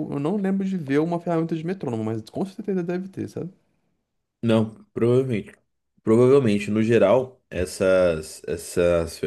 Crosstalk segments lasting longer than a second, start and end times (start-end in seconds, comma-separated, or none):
none